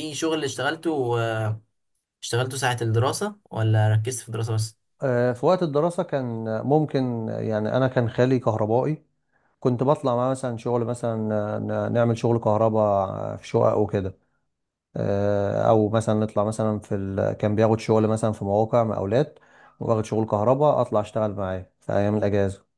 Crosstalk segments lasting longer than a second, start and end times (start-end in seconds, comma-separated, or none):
none